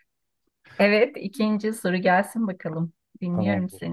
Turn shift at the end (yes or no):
yes